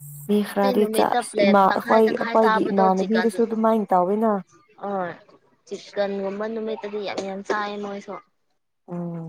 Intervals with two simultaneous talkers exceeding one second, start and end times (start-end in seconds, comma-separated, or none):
0.5-2.8